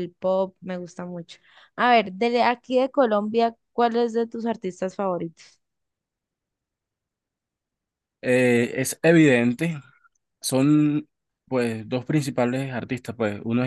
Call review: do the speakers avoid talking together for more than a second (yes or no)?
yes